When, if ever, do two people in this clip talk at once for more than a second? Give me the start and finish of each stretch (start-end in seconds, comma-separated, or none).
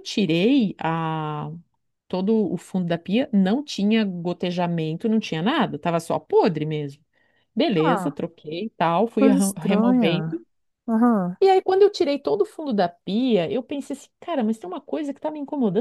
9.2-10.4